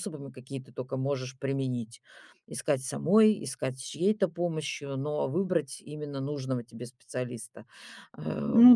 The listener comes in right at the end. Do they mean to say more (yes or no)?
no